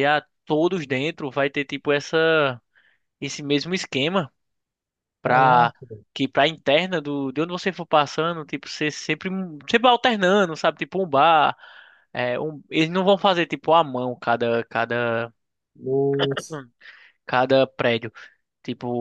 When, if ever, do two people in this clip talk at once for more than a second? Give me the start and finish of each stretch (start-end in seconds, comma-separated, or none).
none